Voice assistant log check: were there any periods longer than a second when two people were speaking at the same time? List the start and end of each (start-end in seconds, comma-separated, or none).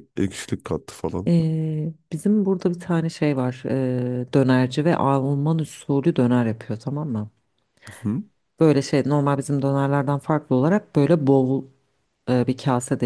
none